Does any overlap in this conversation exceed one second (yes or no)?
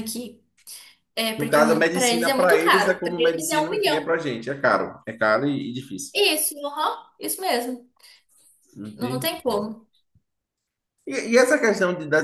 yes